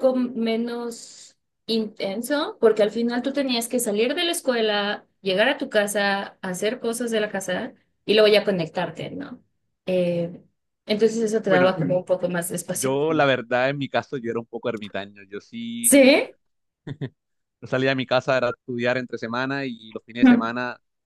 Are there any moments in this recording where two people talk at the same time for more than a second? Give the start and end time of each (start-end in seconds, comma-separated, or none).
none